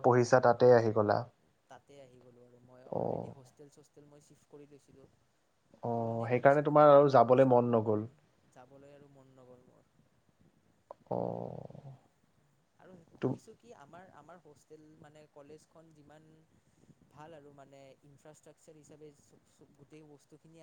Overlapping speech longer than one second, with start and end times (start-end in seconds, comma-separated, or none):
6.3-8.0